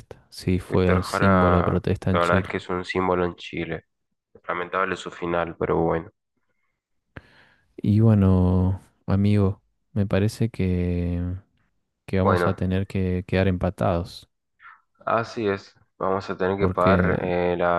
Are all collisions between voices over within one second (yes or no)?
no